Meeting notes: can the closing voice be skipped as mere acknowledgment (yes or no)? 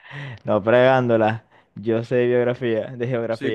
no